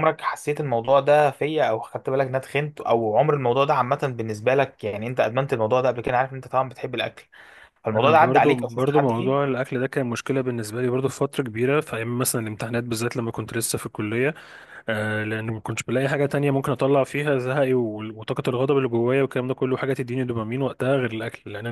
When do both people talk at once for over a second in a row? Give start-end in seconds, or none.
7.9-9.4